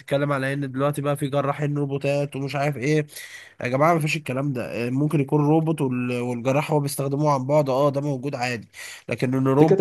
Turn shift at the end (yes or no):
yes